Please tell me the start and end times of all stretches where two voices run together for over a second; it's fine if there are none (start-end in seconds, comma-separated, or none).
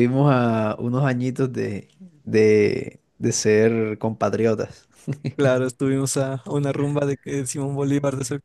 none